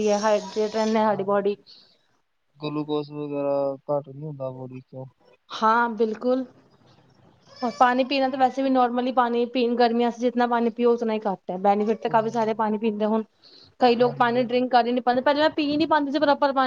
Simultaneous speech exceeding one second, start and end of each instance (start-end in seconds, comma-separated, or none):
none